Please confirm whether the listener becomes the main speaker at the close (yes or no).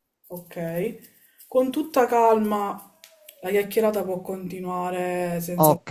yes